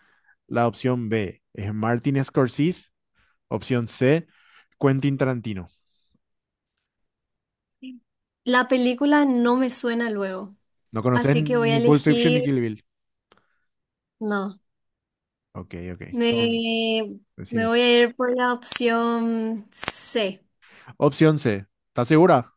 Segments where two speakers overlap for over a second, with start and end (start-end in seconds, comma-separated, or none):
11.1-12.4